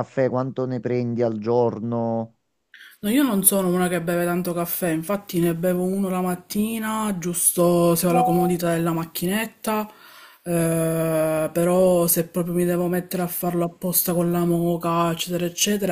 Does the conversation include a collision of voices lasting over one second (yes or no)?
no